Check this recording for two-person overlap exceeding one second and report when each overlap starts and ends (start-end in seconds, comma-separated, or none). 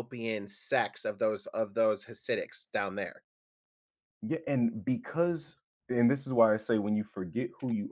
none